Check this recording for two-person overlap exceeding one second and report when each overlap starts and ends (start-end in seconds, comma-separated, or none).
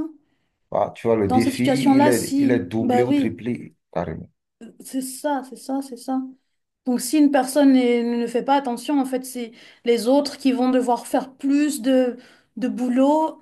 1.3-3.4